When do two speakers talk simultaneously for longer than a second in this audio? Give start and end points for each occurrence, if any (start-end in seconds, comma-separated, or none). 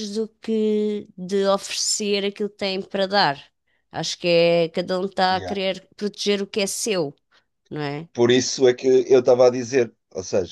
none